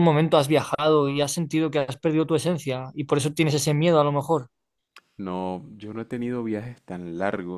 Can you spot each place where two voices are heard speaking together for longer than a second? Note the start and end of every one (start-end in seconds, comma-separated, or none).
none